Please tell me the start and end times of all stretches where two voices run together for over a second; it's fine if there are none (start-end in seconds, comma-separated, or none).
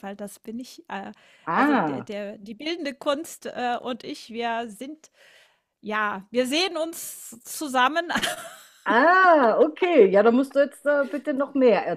none